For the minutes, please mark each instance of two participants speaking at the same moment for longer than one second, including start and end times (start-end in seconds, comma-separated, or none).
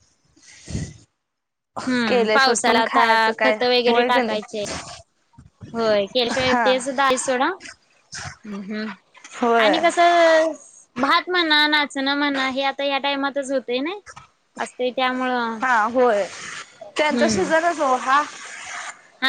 2.1-4.4